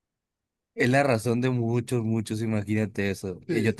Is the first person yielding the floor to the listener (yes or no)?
no